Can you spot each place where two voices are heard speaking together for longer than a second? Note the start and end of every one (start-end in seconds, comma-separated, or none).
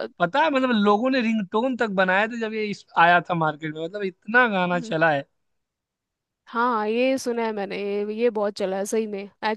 none